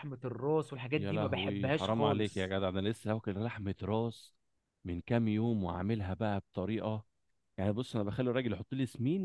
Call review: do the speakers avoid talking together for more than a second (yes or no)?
no